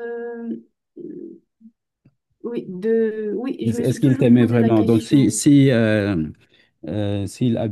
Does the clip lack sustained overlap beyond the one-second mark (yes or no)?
no